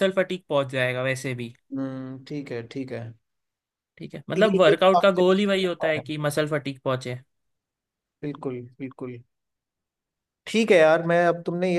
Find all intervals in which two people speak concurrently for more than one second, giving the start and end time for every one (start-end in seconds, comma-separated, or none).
4.3-6.0